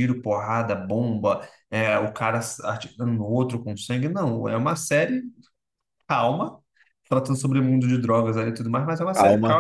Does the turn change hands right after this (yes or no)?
yes